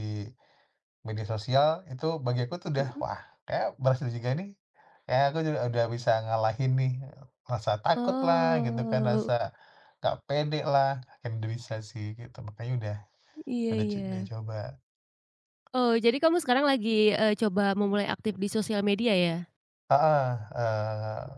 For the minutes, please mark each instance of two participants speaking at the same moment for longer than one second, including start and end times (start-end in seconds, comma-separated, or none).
8.0-9.3